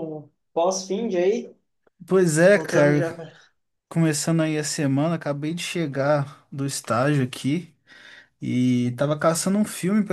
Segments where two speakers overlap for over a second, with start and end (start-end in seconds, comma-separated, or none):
none